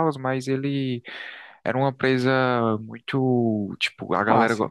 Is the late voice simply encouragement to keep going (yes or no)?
yes